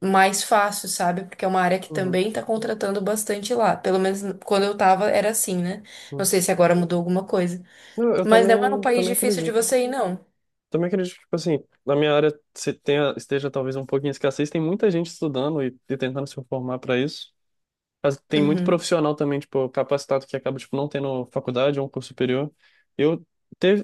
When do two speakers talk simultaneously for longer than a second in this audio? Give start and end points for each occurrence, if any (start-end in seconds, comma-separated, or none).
8.2-9.7